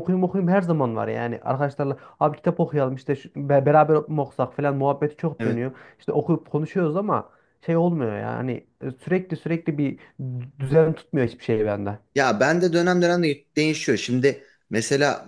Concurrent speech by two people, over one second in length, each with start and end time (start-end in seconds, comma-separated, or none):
none